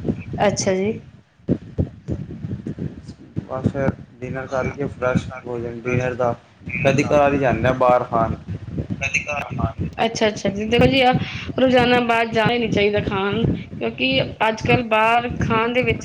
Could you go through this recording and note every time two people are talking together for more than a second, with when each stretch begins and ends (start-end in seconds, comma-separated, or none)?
none